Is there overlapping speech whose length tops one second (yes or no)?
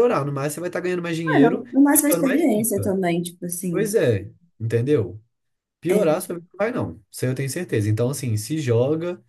yes